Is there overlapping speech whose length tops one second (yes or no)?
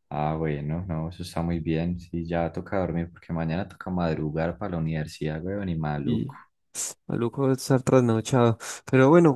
no